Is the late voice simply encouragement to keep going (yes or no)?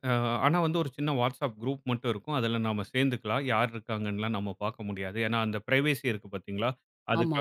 yes